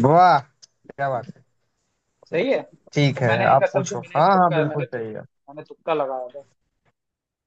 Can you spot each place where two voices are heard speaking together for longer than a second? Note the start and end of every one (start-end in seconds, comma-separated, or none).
2.9-5.2